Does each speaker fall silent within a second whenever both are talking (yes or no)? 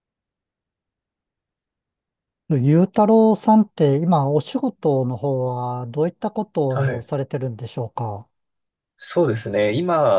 yes